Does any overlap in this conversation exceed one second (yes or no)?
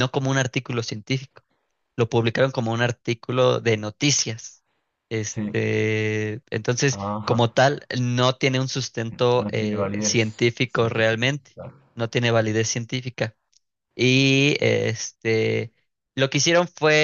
yes